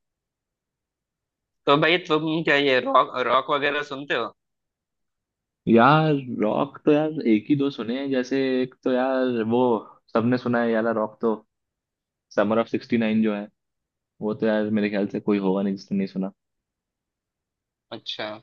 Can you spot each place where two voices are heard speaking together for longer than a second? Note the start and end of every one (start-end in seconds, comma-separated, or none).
none